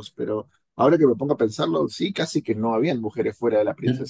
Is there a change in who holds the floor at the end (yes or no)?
yes